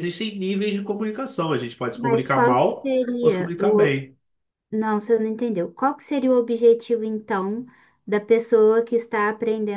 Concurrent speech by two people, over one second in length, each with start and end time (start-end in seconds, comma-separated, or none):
1.9-4.0